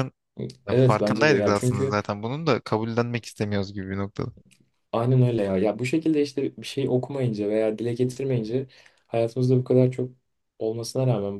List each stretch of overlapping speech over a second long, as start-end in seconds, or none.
0.7-1.9